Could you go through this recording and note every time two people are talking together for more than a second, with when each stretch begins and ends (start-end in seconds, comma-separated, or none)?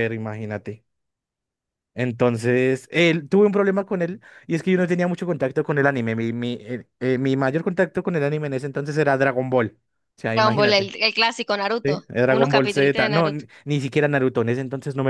11.8-13.4